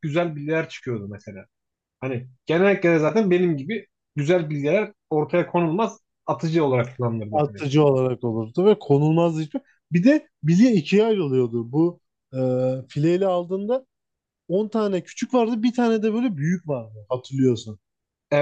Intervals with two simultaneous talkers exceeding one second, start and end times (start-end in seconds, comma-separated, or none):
none